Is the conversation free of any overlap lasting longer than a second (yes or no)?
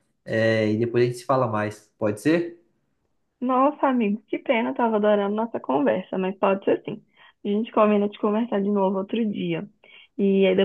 yes